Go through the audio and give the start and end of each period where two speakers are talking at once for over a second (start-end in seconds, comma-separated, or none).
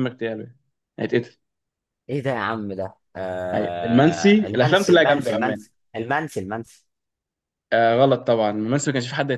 3.5-5.6